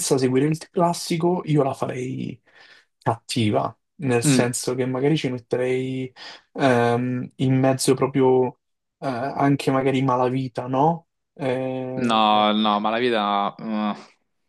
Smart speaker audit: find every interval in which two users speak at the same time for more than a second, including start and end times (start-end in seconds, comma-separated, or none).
none